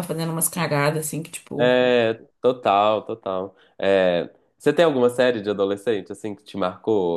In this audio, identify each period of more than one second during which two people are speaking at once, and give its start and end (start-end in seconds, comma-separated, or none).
none